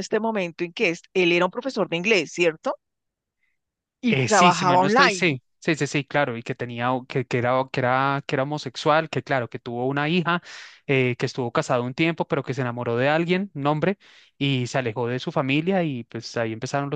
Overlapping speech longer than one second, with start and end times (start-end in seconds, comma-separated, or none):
4.1-5.4